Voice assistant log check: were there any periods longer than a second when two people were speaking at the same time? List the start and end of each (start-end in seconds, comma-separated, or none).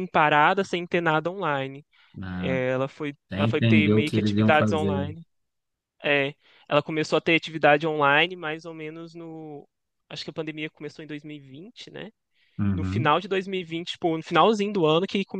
3.3-5.1